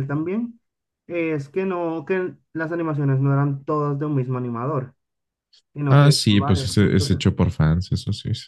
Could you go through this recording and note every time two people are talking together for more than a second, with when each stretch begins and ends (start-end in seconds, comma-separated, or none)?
5.9-7.2